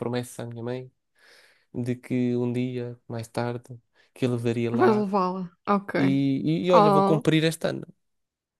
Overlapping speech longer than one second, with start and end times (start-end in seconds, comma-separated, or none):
none